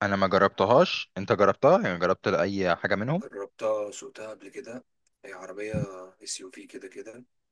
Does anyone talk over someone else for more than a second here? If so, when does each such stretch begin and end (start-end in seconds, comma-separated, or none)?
none